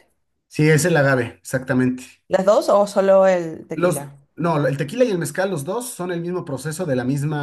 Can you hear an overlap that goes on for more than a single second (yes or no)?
no